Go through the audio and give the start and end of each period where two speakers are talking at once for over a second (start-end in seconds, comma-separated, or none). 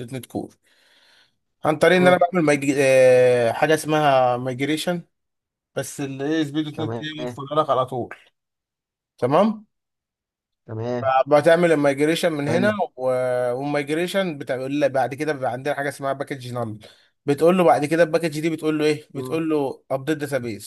none